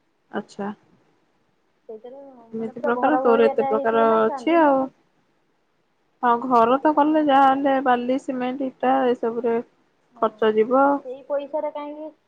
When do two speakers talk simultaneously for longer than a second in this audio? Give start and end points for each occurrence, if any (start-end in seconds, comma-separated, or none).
2.6-4.7